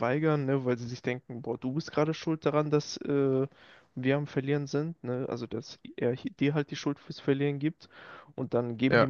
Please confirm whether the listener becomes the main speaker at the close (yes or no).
no